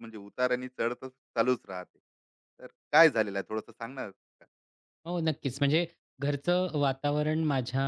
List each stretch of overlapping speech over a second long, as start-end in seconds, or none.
none